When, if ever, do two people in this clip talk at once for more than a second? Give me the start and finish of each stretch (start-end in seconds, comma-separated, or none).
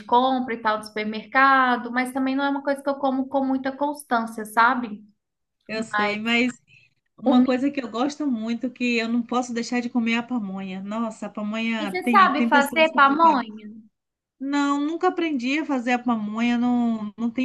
11.8-13.4